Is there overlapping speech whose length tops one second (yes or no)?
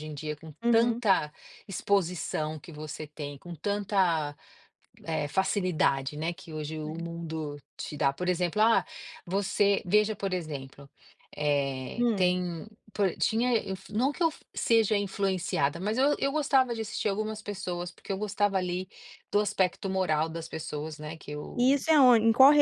no